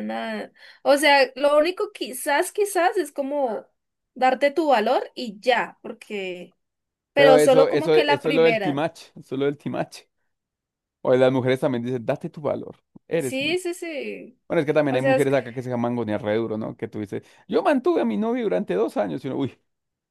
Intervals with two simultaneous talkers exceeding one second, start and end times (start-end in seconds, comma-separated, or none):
7.1-8.8